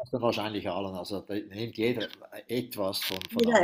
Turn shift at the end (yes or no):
yes